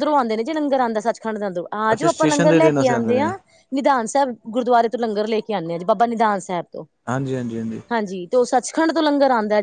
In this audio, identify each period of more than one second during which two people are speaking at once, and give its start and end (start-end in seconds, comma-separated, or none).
1.9-3.3